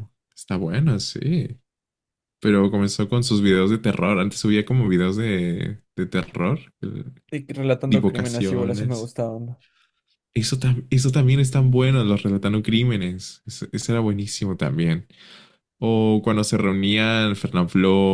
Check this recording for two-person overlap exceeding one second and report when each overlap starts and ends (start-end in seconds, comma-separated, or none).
7.9-9.1